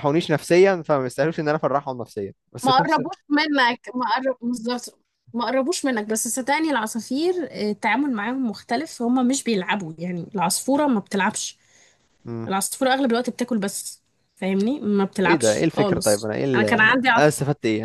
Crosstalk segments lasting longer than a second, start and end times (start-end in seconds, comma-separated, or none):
15.2-17.3